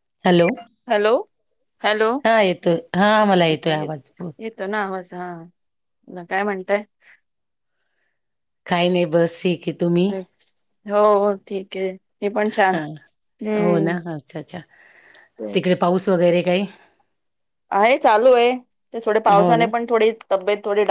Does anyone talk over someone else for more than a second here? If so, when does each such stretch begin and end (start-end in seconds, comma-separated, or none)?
none